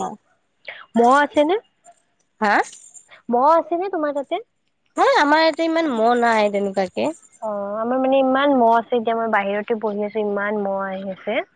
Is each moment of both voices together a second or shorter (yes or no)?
yes